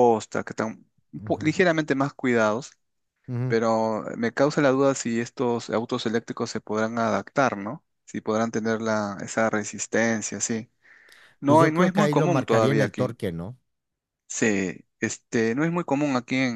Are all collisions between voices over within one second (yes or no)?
no